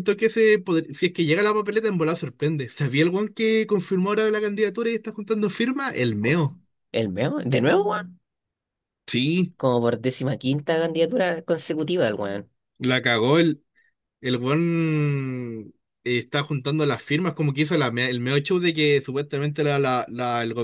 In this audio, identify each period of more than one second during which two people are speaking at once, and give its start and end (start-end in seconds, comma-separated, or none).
none